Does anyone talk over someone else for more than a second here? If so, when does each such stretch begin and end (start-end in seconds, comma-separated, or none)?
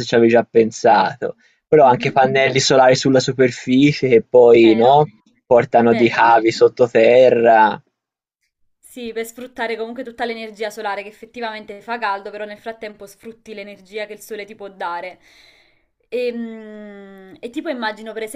none